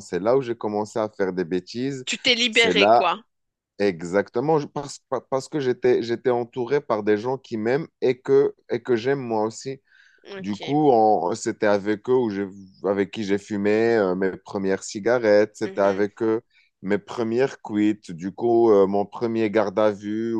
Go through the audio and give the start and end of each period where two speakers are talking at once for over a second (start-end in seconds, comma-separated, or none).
none